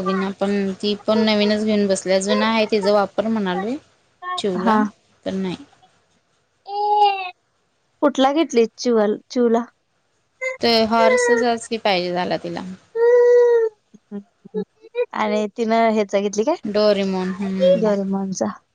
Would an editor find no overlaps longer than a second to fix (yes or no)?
no